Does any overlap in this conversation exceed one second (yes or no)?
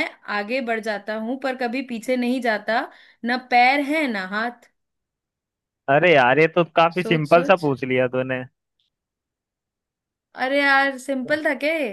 no